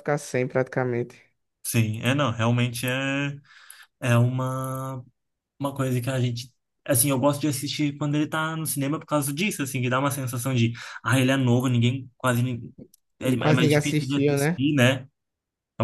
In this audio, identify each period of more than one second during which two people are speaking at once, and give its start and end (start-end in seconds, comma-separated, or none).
13.4-14.6